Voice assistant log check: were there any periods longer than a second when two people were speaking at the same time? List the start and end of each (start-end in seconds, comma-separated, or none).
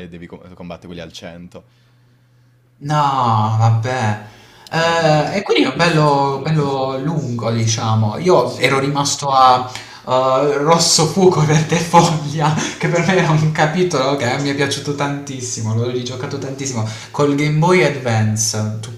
4.7-6.8